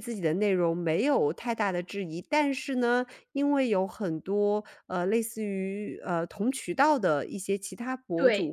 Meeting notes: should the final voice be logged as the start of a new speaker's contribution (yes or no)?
no